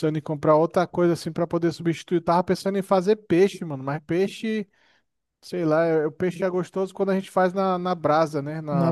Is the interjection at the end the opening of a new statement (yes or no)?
yes